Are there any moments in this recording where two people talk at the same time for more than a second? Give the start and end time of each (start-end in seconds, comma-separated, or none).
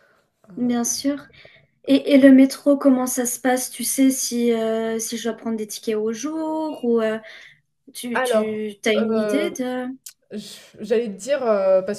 8.1-9.5